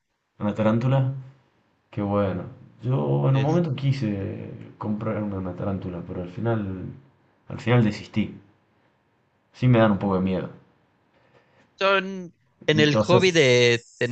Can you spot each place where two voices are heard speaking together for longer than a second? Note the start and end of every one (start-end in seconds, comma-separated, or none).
none